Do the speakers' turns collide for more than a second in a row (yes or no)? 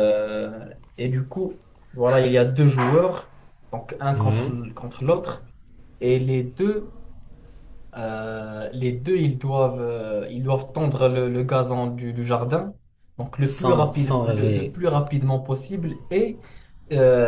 yes